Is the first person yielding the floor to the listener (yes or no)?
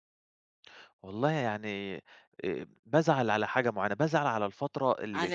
no